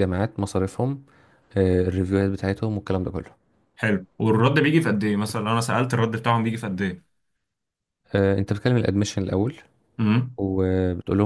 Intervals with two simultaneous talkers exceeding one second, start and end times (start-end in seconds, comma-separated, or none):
none